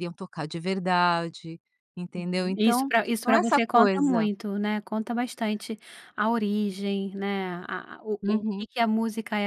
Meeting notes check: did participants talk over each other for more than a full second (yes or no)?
yes